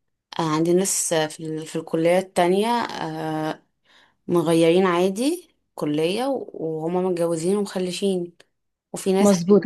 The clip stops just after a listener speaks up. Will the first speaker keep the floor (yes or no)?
no